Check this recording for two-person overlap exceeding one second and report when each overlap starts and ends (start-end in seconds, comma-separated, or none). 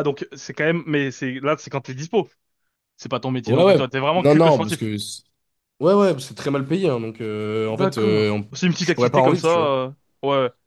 3.5-4.9, 7.7-9.7